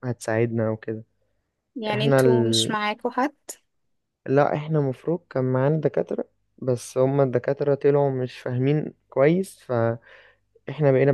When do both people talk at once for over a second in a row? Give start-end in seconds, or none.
none